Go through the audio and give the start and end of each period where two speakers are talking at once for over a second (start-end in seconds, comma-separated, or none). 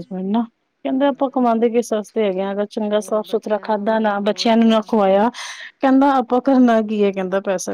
2.9-4.9